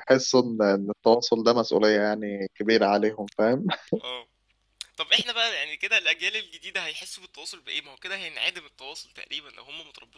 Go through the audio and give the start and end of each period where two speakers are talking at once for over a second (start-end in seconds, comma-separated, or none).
none